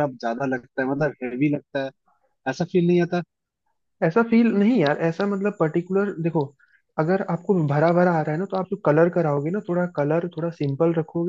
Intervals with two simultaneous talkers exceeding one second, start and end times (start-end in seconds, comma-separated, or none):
none